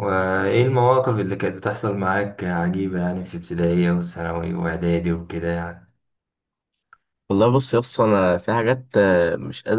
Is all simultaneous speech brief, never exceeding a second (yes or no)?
yes